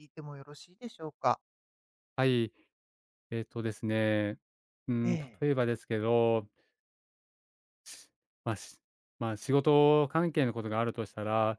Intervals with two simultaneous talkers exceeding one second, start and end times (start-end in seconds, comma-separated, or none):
none